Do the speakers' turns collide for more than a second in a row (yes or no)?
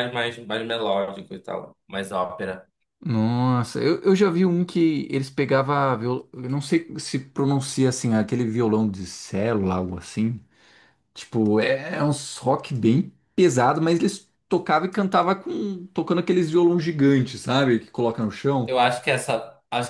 no